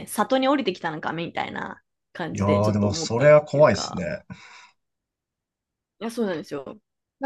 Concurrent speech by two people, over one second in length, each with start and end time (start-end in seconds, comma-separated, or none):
2.3-4.1